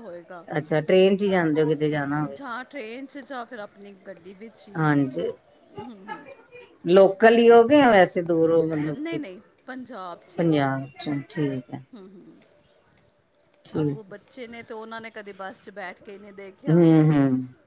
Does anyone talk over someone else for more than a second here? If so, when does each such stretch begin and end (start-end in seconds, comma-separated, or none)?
none